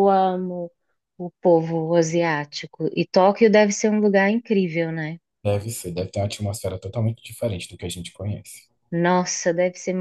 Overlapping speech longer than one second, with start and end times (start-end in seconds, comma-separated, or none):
none